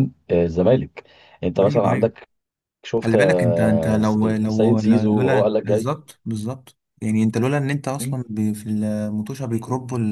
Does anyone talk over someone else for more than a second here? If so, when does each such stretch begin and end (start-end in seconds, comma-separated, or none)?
3.0-5.9